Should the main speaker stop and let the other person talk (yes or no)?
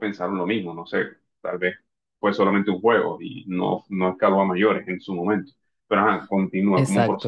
yes